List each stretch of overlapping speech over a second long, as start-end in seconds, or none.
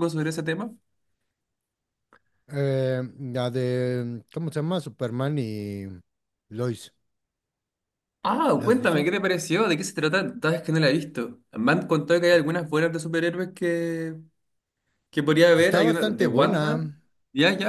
15.5-16.8